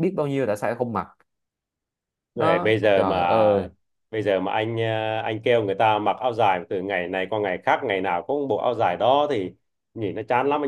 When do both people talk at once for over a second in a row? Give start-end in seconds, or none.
2.4-3.7